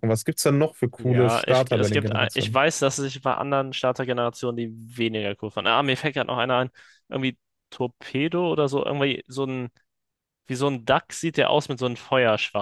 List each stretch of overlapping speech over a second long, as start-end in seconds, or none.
1.0-2.6